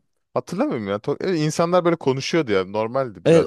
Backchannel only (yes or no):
no